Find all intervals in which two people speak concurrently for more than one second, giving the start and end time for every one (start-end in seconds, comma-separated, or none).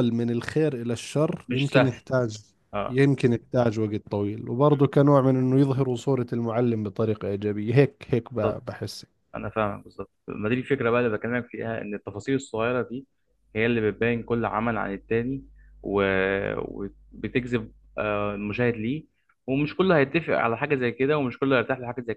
none